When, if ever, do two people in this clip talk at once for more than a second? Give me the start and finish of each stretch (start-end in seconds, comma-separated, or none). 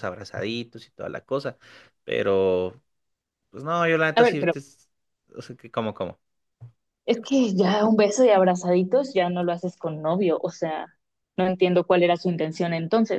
none